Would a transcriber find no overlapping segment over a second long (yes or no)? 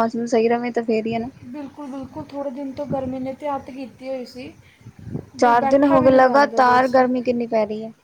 no